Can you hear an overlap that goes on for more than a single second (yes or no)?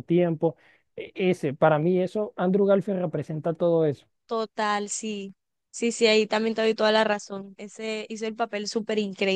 no